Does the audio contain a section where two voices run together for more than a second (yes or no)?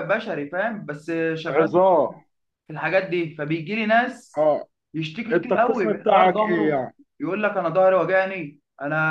yes